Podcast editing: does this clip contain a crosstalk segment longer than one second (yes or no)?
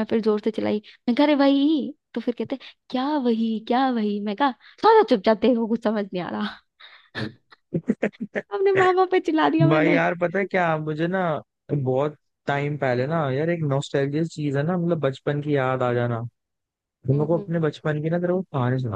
no